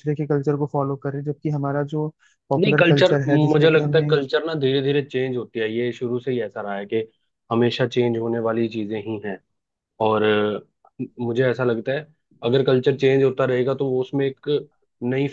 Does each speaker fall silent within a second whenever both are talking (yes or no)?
no